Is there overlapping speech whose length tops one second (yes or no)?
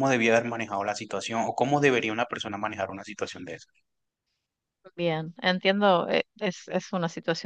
no